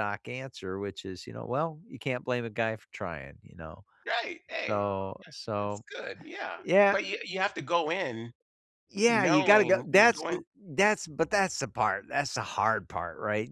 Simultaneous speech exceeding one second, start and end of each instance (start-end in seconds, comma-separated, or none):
9.1-10.4